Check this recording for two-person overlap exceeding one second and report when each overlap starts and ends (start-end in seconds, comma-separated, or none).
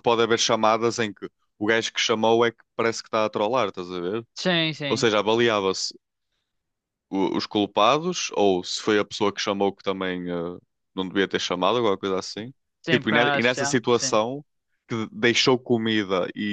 12.9-14.2